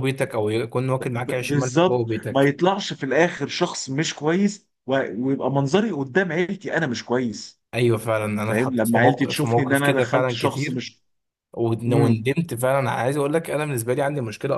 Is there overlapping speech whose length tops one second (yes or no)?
yes